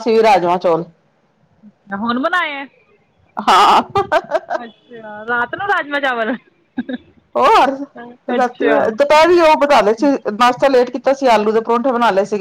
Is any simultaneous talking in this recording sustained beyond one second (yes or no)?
no